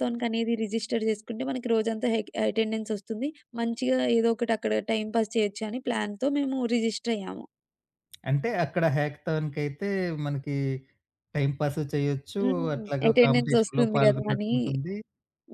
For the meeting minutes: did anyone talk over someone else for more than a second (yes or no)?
yes